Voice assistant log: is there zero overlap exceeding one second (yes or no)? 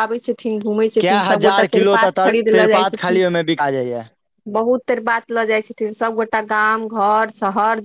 no